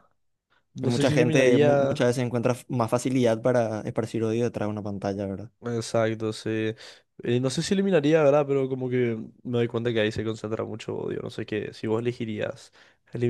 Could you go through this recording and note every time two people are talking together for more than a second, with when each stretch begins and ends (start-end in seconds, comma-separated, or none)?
0.8-2.1